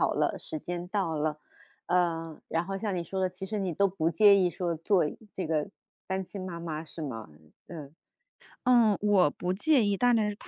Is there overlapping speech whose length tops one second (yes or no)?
no